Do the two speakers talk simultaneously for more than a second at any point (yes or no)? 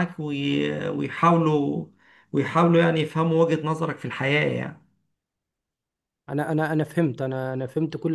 no